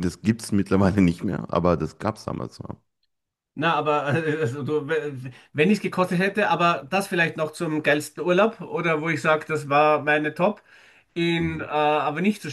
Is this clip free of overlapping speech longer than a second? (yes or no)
yes